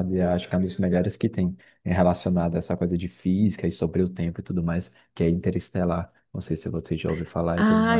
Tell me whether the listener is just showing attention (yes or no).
no